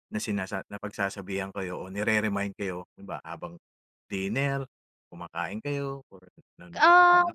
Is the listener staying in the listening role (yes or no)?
no